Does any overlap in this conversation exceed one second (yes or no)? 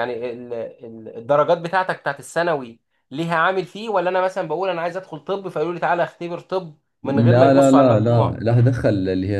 yes